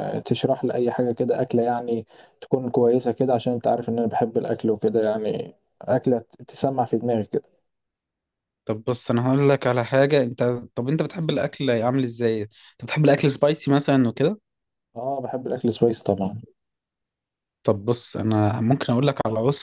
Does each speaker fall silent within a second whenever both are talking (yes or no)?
yes